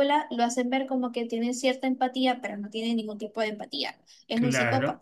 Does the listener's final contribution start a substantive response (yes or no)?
yes